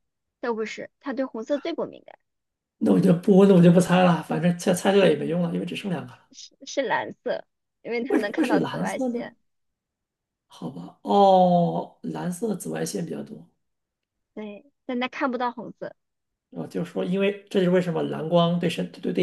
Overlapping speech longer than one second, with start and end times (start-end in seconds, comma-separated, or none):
8.1-9.3